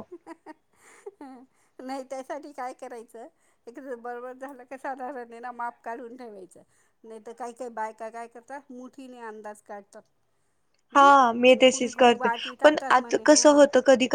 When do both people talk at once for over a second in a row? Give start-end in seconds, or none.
11.0-13.5